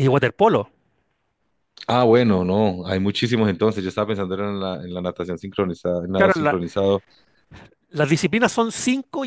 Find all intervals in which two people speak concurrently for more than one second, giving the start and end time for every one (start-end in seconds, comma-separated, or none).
none